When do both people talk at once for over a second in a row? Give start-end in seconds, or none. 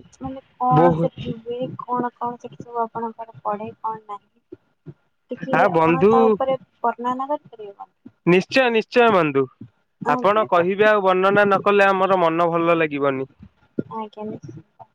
none